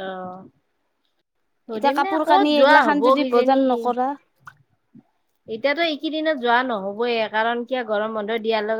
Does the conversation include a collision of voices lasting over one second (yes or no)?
yes